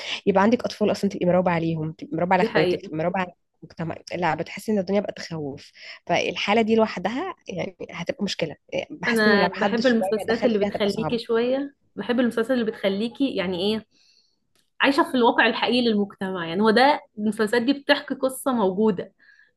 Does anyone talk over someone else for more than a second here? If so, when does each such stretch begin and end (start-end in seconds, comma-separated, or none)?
9.1-11.2